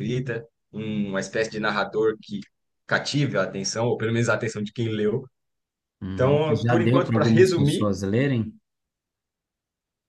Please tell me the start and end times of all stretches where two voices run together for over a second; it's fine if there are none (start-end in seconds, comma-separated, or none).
6.1-7.9